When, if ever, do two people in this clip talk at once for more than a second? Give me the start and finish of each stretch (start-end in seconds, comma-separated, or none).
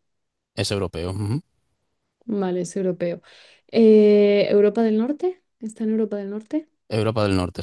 none